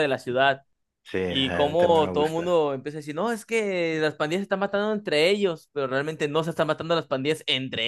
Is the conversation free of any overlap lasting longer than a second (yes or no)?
no